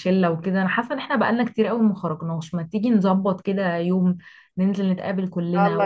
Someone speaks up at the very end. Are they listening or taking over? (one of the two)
listening